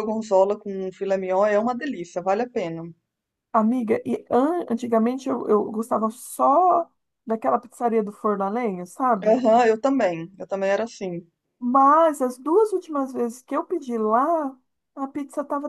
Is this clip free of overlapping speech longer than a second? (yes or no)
yes